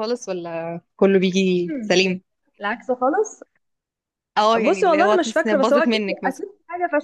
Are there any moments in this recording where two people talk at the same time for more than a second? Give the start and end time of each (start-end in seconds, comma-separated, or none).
4.6-6.4